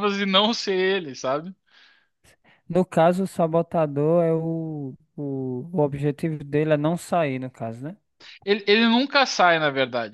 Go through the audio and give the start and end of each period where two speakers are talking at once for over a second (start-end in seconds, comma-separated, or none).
none